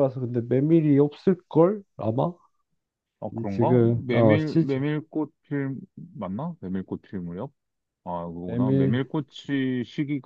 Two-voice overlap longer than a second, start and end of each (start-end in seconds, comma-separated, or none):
3.3-4.8